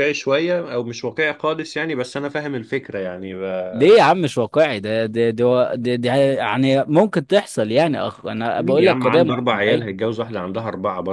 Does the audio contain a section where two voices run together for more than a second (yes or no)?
yes